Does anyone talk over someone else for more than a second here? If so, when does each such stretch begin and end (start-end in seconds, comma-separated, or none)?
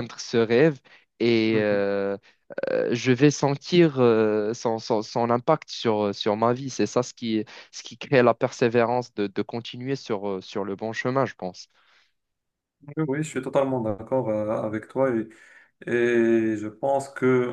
none